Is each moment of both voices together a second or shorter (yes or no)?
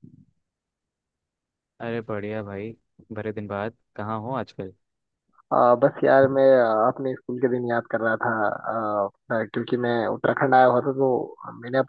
yes